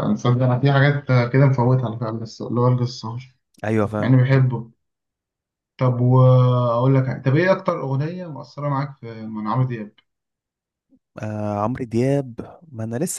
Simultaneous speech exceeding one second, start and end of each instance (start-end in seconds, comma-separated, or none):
none